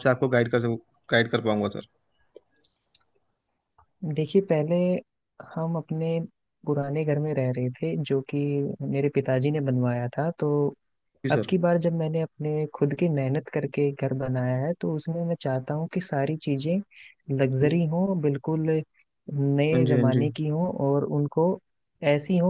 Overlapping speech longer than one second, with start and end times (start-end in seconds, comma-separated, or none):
none